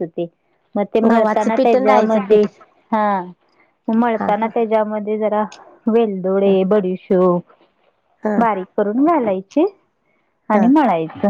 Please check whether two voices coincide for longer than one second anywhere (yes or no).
yes